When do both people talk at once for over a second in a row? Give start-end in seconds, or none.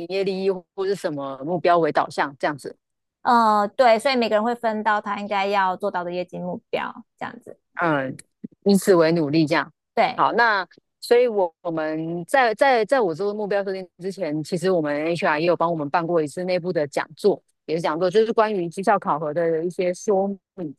none